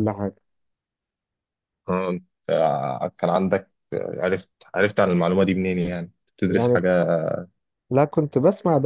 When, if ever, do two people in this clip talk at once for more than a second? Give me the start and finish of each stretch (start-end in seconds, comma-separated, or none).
none